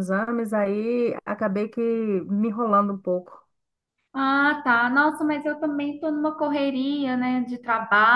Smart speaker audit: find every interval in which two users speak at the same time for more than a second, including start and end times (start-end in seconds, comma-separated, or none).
none